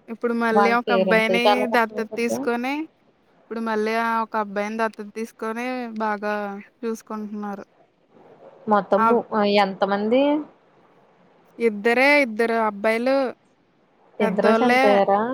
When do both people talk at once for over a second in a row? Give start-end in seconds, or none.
0.6-2.4